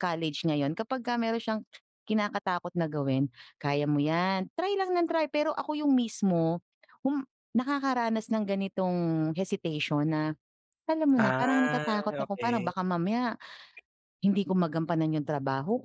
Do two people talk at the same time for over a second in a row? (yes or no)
yes